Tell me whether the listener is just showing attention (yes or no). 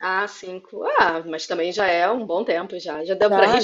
no